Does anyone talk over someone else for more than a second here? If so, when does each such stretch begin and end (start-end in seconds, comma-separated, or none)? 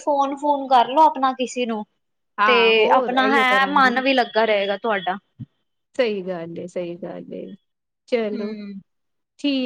2.5-3.9